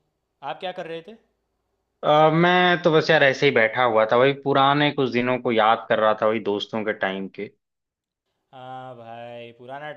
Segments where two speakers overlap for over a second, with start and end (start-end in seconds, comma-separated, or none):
none